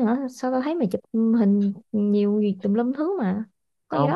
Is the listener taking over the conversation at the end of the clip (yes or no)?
yes